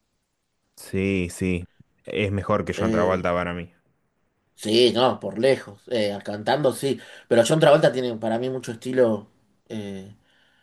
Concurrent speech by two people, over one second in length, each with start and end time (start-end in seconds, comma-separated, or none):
none